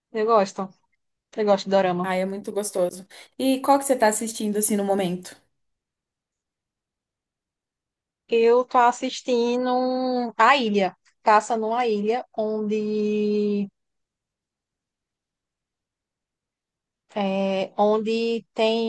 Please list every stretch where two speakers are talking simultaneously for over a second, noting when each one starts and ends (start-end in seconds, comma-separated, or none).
none